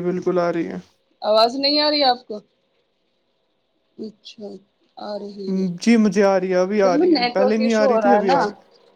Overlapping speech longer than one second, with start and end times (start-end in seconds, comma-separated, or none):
5.8-8.4